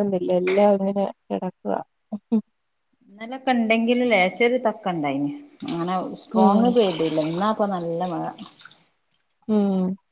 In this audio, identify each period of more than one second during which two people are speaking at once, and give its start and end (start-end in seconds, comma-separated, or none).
none